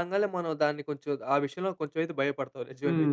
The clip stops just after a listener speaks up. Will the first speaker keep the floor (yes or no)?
no